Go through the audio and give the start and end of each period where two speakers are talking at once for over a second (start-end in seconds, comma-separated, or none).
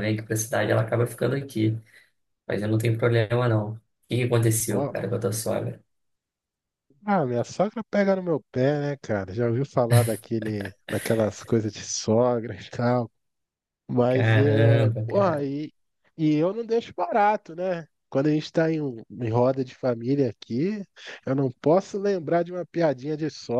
14.1-15.5